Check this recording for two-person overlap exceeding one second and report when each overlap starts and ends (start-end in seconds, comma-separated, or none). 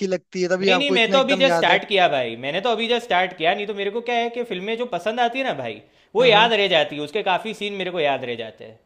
0.6-1.8